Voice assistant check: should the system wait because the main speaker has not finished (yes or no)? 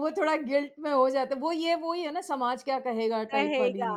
no